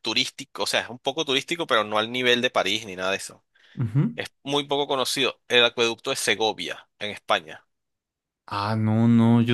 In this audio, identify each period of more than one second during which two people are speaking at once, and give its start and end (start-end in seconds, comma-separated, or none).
none